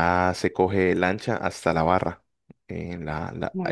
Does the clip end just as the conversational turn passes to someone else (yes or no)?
no